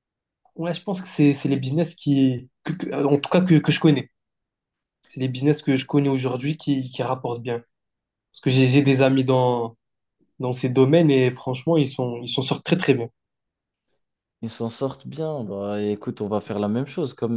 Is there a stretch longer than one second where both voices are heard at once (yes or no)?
no